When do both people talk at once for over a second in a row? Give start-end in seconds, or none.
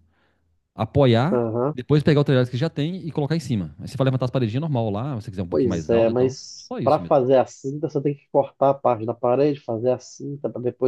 5.5-7.2